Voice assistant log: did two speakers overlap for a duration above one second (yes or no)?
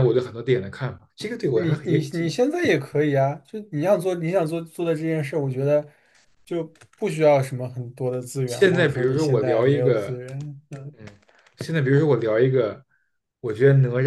yes